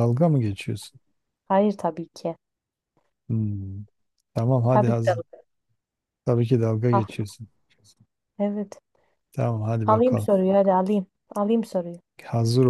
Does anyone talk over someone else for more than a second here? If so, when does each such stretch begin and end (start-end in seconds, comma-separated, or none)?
none